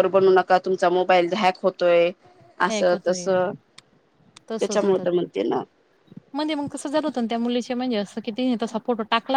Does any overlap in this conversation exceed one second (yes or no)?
no